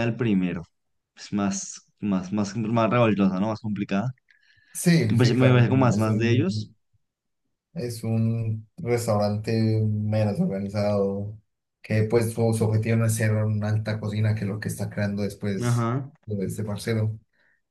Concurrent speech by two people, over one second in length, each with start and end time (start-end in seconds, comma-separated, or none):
5.1-6.7